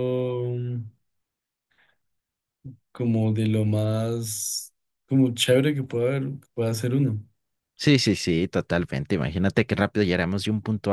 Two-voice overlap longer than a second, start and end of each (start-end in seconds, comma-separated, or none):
none